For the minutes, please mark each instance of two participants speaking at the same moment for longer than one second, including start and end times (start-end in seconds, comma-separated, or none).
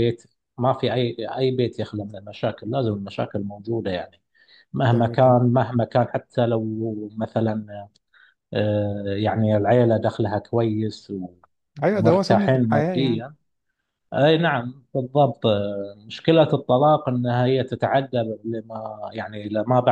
11.9-13.2